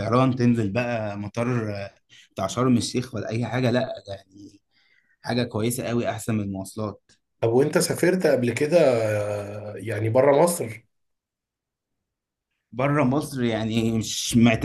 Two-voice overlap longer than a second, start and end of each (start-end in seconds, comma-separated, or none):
none